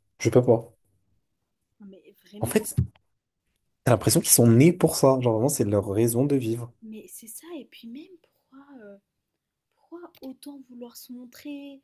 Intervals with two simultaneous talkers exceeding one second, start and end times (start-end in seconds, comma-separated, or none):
none